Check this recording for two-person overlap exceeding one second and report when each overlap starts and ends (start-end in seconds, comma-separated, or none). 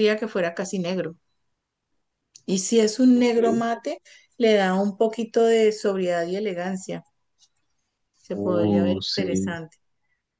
8.4-9.6